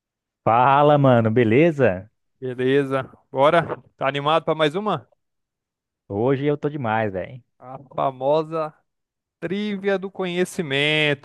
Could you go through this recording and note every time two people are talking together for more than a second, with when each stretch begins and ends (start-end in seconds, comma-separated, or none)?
none